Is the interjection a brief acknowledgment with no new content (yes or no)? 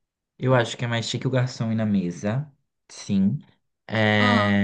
yes